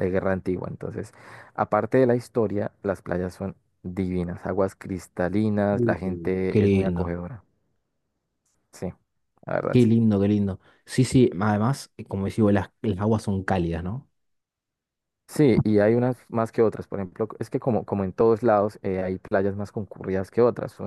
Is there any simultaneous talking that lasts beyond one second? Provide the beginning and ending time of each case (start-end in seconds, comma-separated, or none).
5.7-7.2